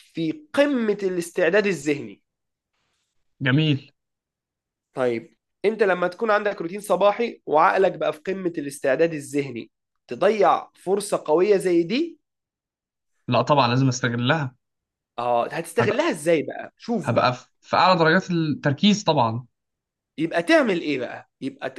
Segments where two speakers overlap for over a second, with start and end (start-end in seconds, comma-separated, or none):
none